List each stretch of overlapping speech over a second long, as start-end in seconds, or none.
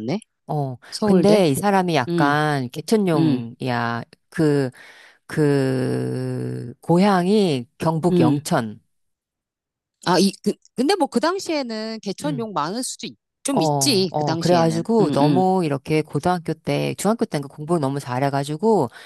13.5-15.4